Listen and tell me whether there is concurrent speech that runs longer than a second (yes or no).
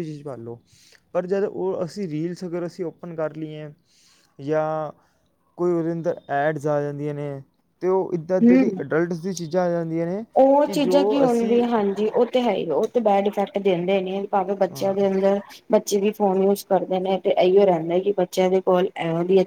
no